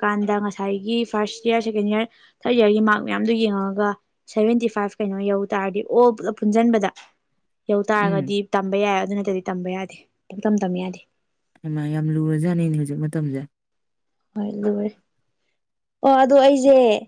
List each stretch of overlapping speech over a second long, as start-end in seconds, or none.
none